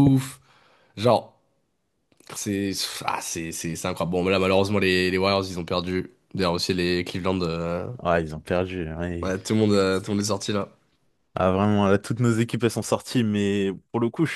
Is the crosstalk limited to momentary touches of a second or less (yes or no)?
yes